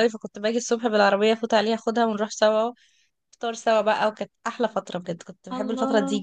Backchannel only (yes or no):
yes